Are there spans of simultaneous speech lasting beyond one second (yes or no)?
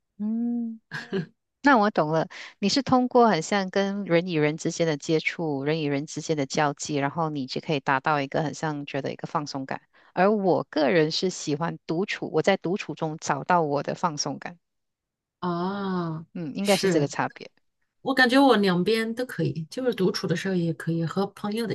no